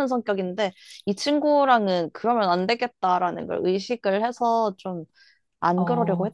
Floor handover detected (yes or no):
yes